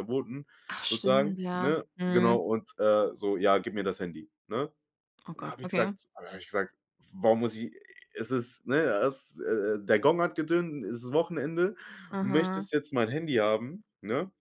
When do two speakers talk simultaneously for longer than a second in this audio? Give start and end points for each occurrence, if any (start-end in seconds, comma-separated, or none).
0.8-2.4